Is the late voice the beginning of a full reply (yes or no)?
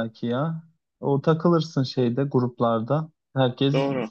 no